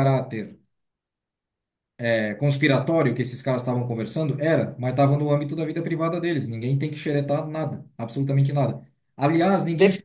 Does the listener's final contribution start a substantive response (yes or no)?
no